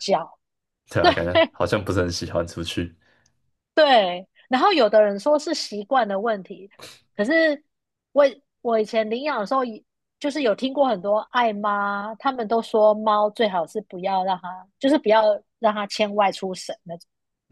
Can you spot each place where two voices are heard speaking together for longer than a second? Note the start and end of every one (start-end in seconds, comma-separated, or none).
none